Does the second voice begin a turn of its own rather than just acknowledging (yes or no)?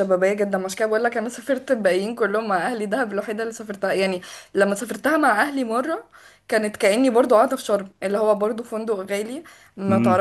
no